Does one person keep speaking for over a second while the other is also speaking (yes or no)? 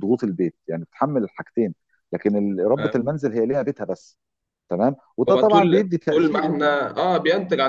yes